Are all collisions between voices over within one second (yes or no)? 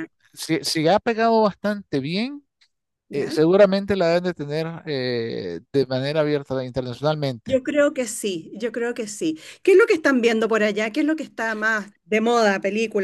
yes